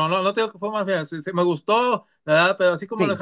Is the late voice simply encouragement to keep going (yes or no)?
yes